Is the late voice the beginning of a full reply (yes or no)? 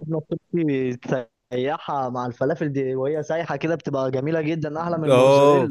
yes